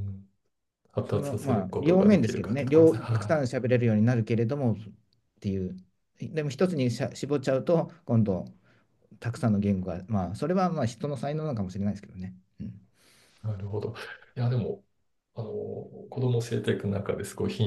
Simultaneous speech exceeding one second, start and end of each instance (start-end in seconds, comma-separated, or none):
1.1-3.4